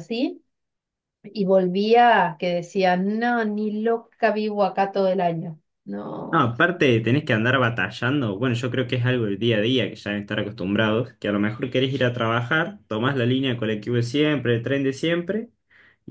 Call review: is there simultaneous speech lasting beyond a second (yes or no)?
no